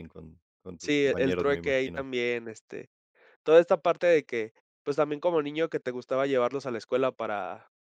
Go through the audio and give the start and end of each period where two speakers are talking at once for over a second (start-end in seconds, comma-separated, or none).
0.8-2.0